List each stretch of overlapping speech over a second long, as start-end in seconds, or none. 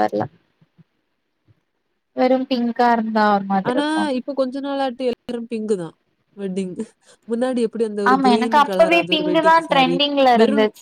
none